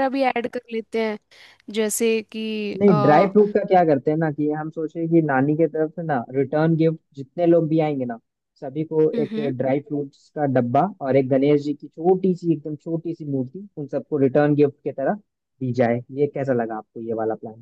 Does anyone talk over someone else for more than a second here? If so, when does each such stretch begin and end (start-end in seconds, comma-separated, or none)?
none